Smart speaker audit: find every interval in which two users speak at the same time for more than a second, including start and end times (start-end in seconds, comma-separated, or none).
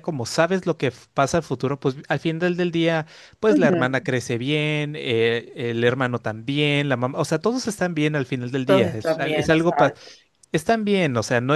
8.7-9.9